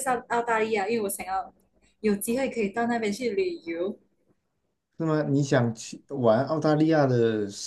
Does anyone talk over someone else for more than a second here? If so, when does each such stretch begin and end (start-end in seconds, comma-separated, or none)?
none